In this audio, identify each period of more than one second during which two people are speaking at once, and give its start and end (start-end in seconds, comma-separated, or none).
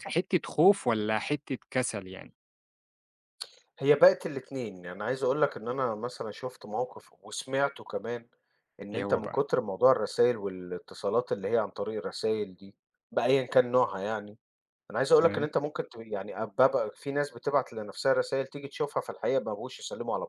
none